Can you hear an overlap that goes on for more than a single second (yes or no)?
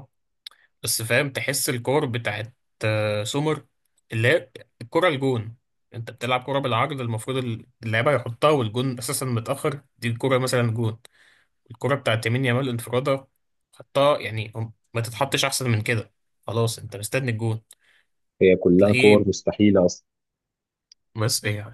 no